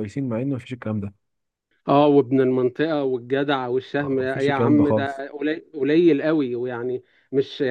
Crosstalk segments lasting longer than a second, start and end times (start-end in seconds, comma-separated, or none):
4.0-5.2